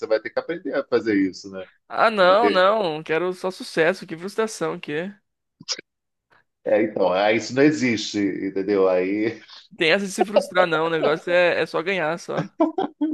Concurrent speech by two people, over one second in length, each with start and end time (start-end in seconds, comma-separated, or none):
none